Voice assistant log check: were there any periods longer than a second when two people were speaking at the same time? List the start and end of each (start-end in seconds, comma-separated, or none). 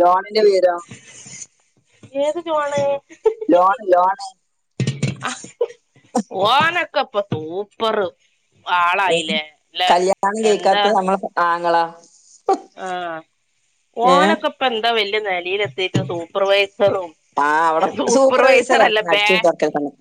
none